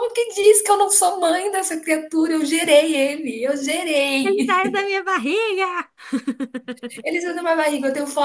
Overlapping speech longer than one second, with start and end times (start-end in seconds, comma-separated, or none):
none